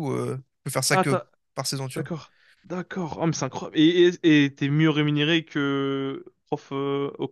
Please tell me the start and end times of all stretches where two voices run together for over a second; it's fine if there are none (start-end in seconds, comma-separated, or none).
none